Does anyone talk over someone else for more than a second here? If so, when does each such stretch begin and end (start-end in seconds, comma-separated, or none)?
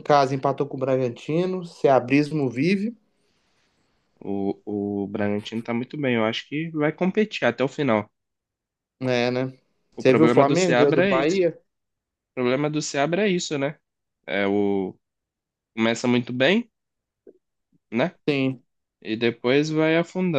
10.0-11.4